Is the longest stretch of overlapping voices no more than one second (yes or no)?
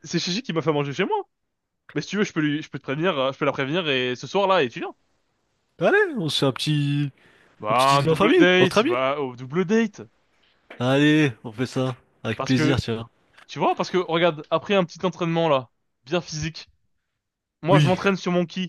no